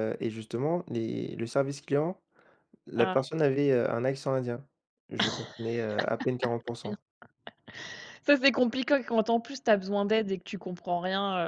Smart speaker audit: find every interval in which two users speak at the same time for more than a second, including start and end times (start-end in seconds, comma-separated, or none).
none